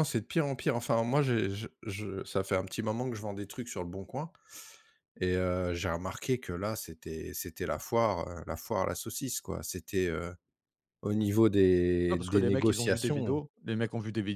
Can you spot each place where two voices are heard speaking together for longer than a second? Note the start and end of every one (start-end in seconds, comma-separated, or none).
12.1-13.4